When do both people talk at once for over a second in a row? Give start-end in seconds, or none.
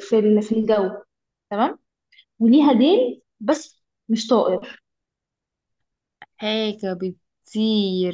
none